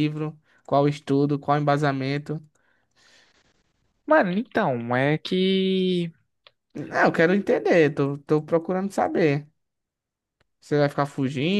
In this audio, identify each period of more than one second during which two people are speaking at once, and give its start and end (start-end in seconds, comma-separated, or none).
none